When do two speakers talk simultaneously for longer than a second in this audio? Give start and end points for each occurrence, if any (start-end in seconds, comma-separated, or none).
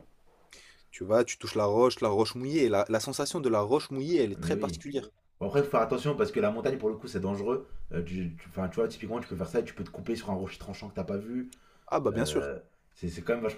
none